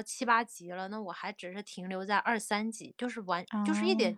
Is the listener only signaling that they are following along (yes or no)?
yes